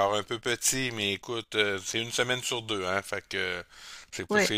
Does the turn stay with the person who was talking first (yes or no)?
yes